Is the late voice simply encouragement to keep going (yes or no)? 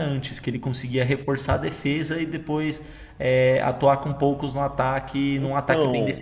no